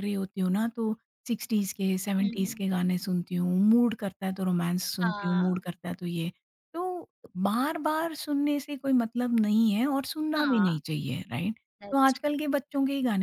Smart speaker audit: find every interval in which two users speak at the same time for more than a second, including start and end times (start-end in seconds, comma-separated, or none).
none